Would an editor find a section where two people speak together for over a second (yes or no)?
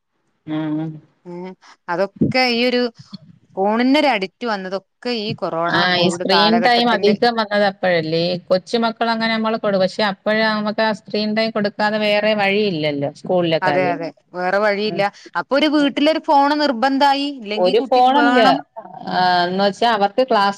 no